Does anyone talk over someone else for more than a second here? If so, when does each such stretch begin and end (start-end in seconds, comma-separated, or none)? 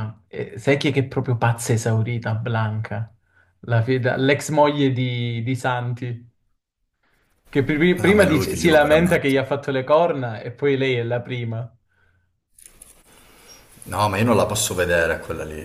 8.0-9.7